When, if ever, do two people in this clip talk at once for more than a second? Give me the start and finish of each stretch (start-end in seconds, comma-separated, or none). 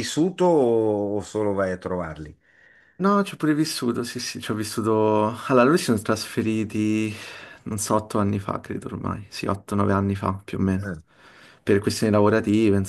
none